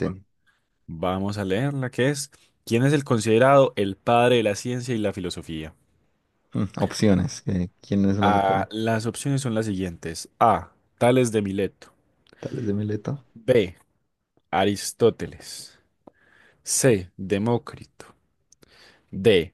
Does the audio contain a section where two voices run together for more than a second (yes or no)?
no